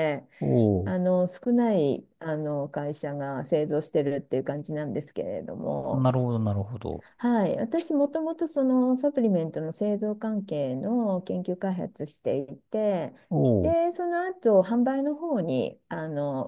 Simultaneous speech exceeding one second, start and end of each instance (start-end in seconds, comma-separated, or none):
none